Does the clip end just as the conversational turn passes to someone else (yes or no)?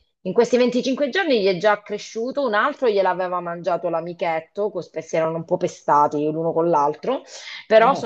no